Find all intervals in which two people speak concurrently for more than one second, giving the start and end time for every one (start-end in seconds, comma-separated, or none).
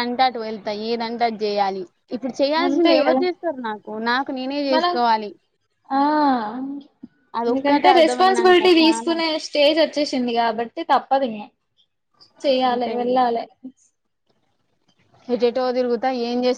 7.5-9.2